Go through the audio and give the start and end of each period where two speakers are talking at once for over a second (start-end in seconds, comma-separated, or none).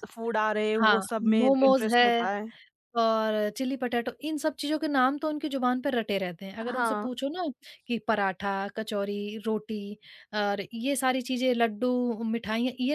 0.8-2.3